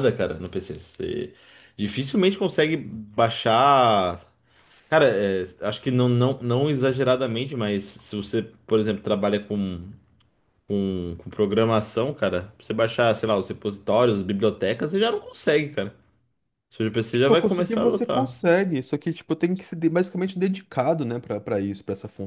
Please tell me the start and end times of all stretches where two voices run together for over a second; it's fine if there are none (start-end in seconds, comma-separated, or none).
17.1-18.4